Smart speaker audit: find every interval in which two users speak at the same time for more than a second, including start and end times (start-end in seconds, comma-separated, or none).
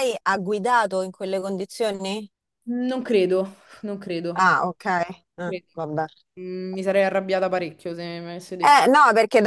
none